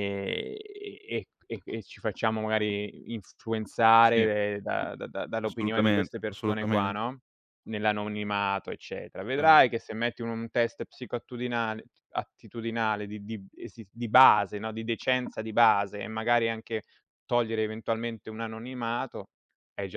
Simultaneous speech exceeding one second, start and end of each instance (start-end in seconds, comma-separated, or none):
5.4-7.0